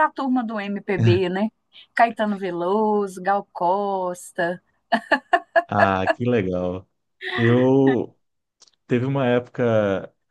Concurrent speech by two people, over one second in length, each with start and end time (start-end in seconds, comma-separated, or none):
none